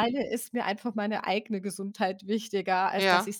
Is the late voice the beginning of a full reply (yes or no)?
no